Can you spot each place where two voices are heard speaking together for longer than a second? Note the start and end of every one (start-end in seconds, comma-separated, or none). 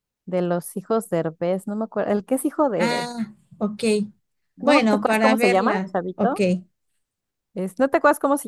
4.6-6.4